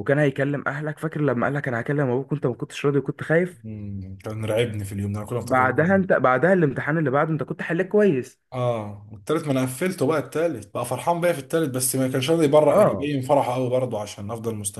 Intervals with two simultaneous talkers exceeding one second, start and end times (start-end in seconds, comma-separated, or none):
none